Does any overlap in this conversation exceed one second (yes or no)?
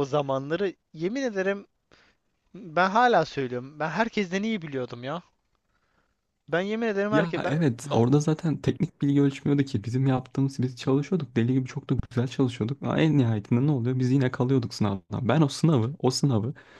no